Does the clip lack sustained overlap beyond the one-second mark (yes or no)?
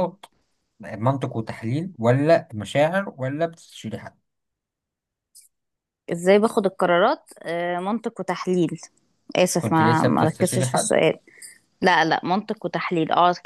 no